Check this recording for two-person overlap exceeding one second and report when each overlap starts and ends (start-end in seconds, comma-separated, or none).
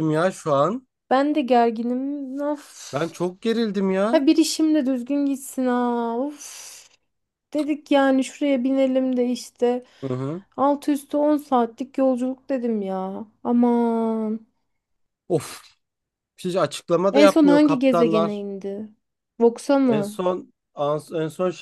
17.2-18.4